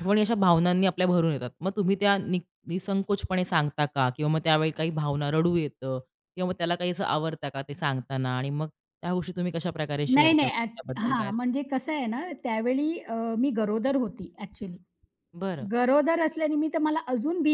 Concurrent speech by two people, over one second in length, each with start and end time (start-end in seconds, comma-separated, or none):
10.1-11.5